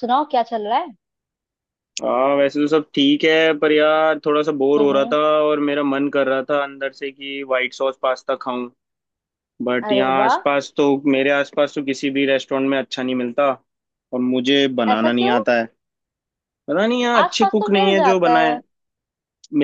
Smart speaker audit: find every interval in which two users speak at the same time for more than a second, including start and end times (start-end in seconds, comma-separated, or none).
17.2-18.6